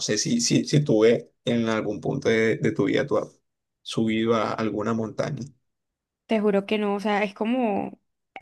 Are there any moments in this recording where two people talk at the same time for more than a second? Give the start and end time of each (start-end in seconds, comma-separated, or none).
none